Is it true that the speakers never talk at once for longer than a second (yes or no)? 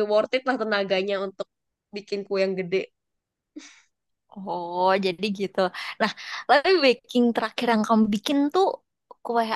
yes